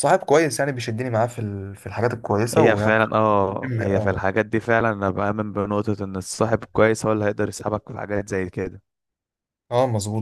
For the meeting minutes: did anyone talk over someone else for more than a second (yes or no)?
no